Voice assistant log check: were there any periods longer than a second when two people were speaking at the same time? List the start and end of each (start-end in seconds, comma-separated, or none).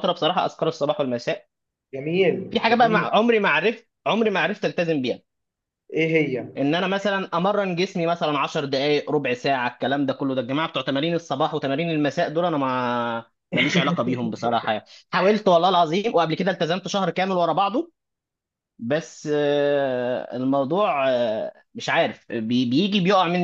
none